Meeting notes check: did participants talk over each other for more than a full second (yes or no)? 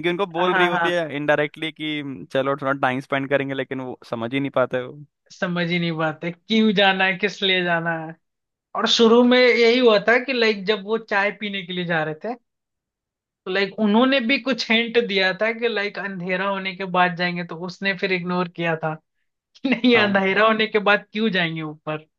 no